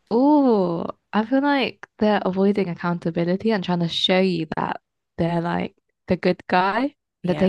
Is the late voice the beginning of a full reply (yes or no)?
no